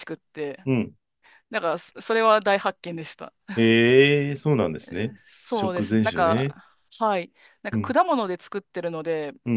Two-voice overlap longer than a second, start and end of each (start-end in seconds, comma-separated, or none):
5.2-6.6